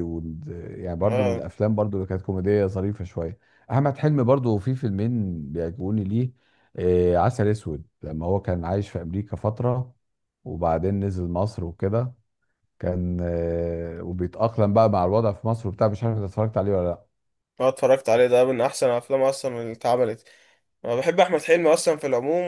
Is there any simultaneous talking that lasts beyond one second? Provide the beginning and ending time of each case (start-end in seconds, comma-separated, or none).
none